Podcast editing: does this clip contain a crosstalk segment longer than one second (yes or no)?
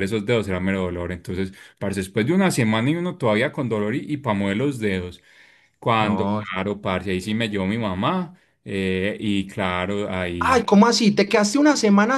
no